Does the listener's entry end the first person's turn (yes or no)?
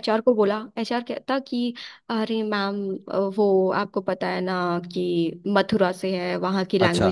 no